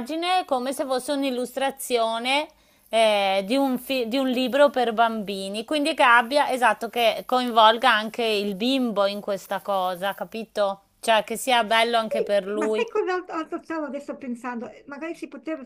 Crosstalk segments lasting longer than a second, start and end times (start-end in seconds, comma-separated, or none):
11.6-12.9